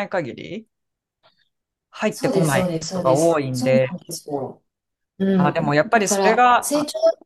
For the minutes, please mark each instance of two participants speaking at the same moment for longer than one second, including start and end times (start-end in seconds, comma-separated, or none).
2.1-4.0, 5.3-6.7